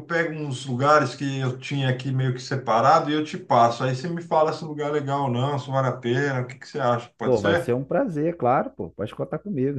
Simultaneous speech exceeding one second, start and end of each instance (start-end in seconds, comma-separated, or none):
none